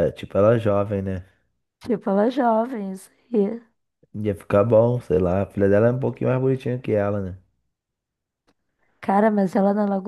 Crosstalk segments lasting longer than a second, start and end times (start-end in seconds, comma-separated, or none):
none